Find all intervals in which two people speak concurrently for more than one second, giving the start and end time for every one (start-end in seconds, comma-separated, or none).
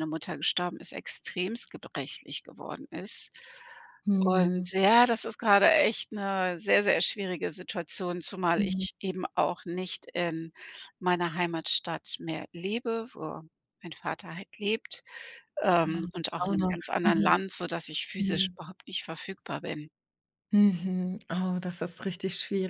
15.8-17.4